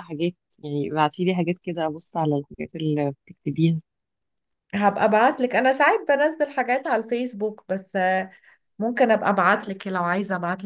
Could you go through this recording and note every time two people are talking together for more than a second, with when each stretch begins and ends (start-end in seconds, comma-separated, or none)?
none